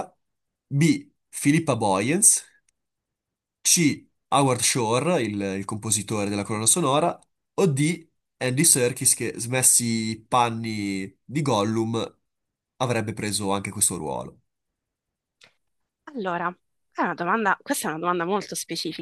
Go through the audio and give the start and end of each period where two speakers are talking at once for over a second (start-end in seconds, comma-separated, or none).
none